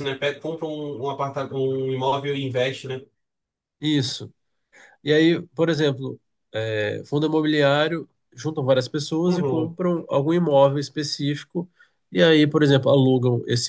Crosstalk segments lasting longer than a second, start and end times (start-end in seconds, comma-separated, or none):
none